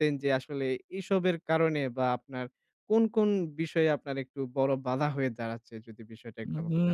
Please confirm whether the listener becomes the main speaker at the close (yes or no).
yes